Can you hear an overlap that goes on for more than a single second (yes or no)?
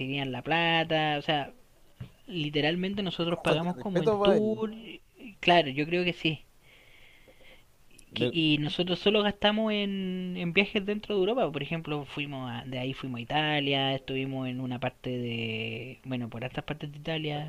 yes